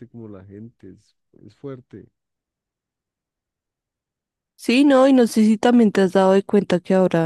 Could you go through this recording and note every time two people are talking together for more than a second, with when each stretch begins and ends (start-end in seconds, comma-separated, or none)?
none